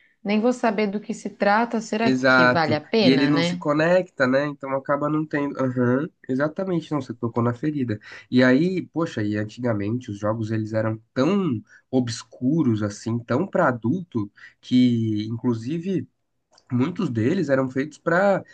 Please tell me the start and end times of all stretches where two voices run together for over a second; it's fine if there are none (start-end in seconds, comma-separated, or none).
2.0-3.6